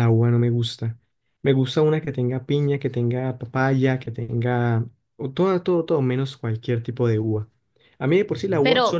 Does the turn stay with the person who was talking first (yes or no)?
yes